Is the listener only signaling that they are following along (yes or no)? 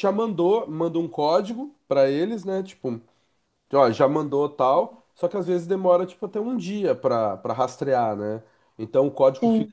yes